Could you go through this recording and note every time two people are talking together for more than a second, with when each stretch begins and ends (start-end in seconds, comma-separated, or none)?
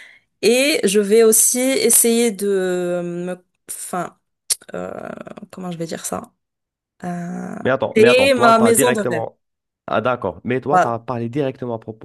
8.0-9.2